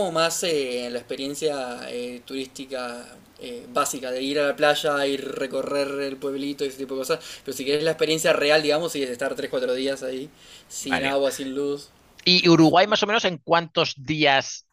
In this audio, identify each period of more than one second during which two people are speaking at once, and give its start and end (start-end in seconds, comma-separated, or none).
none